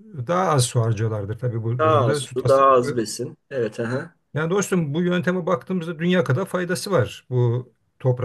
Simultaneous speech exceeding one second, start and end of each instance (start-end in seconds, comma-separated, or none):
1.8-3.0